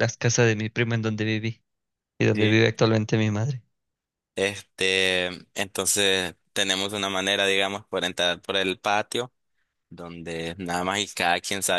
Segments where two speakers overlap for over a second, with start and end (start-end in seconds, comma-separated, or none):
none